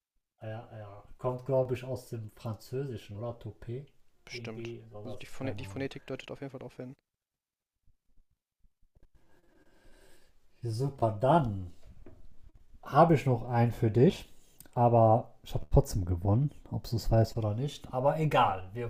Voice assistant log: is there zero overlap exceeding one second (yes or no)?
no